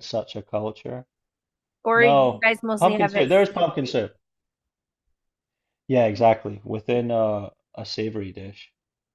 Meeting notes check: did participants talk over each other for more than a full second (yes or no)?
yes